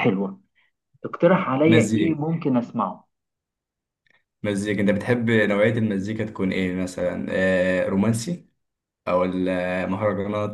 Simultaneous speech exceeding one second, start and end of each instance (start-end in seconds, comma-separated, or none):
none